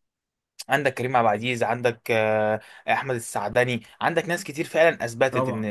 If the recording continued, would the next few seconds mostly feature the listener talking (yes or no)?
no